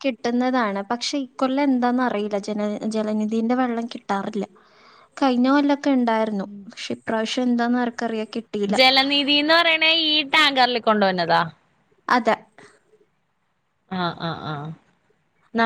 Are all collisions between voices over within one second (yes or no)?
yes